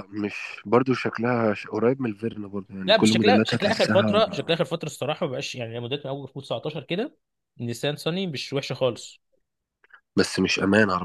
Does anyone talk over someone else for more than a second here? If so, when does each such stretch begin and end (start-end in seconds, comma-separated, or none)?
2.9-4.2